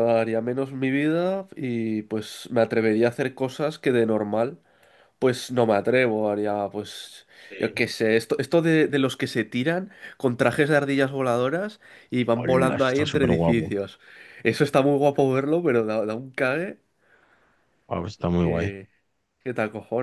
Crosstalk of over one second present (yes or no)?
yes